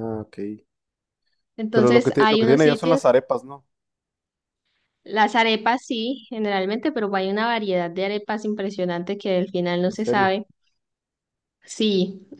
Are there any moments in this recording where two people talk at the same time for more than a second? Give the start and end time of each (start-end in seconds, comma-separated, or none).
1.7-3.0